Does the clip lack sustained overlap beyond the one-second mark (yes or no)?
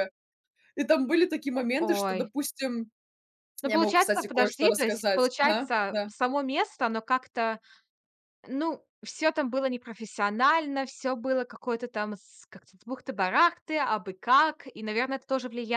no